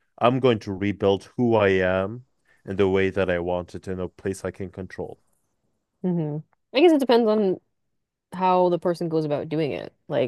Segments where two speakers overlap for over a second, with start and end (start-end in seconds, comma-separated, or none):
none